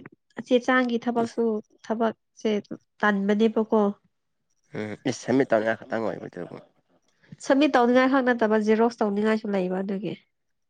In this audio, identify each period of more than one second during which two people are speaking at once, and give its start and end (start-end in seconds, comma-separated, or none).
none